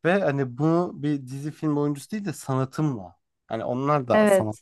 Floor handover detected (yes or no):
no